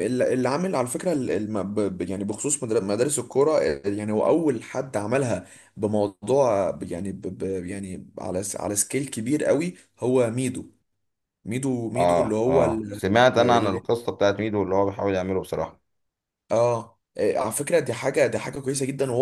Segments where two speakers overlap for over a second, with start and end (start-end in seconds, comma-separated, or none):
12.0-13.8